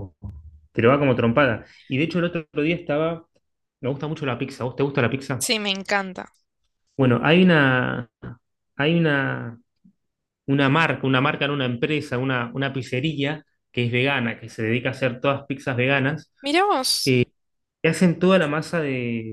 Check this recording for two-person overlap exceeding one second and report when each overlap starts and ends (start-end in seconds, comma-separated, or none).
none